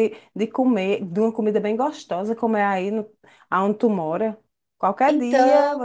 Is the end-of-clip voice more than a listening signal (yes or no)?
no